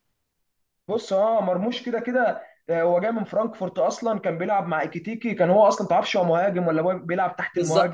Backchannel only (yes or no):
no